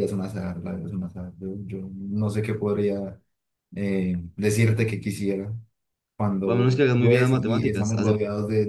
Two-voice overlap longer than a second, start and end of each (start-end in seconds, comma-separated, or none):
6.4-8.1